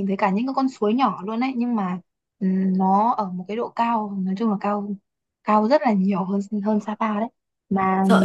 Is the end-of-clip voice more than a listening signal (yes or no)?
yes